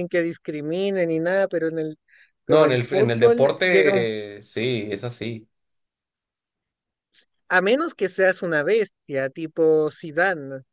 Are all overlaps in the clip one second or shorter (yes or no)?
no